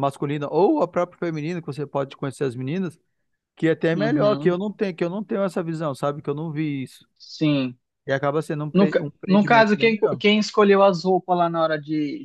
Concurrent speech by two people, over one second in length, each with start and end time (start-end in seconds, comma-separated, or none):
8.7-10.2